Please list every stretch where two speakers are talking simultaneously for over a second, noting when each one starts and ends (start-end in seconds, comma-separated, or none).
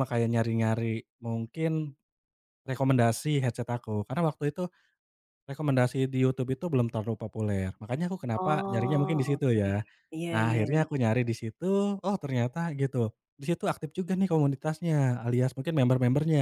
8.4-9.7